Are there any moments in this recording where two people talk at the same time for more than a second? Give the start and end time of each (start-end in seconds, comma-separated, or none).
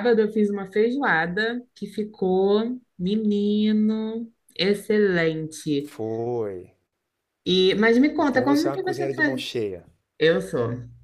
8.2-9.4